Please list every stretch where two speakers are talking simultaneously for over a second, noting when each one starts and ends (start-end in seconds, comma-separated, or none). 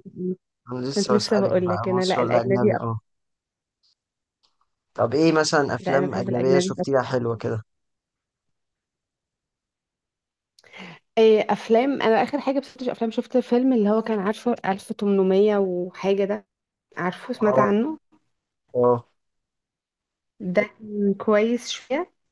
0.9-3.0, 5.8-7.1